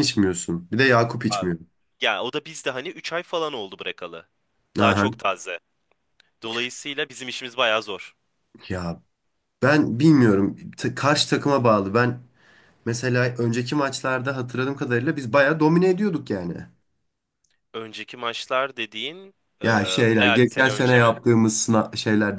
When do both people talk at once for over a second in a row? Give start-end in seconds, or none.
19.6-21.1